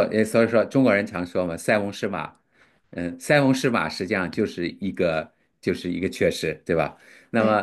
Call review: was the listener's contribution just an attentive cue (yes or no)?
yes